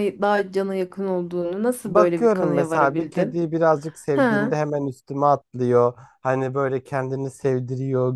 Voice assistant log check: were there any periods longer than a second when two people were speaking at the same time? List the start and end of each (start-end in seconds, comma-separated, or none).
1.9-3.4